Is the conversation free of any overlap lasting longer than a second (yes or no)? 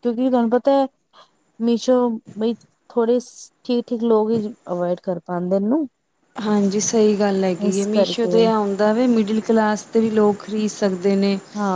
yes